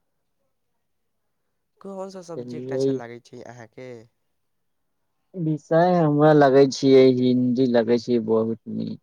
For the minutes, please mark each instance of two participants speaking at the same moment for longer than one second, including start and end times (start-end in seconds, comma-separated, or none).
none